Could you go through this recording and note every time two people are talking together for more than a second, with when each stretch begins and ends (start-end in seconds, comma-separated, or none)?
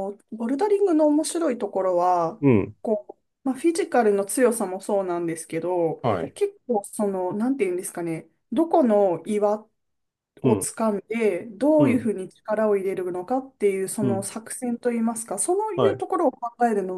none